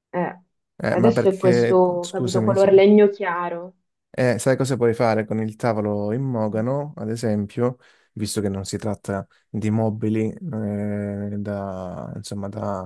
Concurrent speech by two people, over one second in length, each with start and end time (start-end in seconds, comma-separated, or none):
0.9-2.7